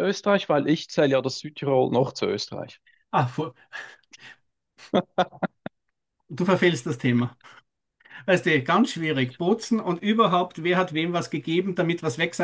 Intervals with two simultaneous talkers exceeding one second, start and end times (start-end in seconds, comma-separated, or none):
none